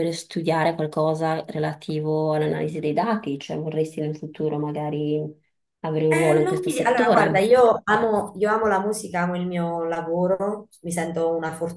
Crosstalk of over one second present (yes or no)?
yes